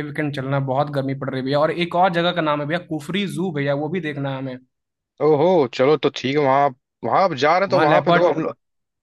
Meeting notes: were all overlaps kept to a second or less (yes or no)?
yes